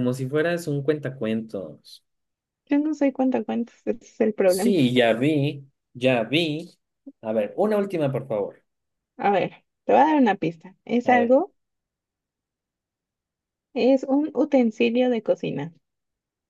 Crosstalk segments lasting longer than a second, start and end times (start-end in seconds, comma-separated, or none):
none